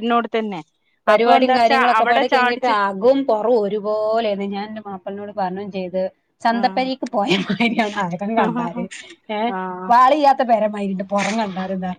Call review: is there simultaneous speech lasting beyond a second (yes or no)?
yes